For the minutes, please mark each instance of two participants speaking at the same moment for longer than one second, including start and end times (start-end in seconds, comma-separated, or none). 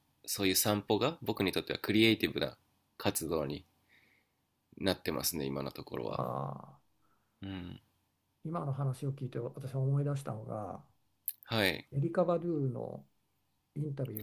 none